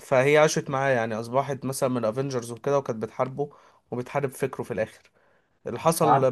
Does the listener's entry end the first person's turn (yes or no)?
no